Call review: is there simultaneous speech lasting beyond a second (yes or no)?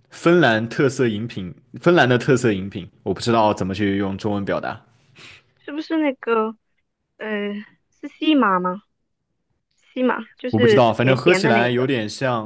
yes